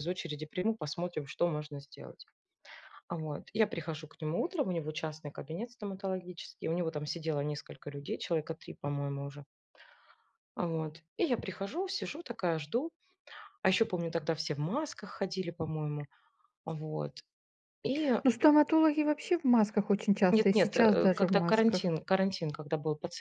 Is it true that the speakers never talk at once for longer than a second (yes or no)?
no